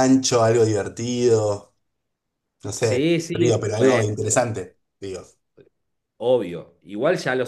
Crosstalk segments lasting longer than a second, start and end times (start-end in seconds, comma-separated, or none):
2.8-4.4